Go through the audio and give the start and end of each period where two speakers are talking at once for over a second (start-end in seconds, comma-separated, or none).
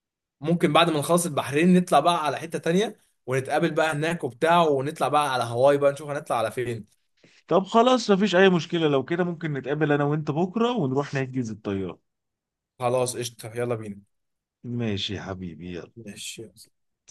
none